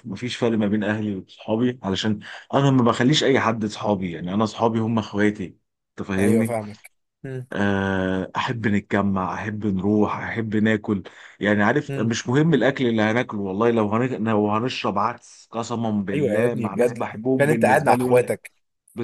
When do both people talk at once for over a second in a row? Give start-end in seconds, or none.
16.1-18.4